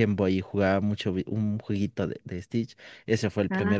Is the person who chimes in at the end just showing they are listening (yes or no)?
yes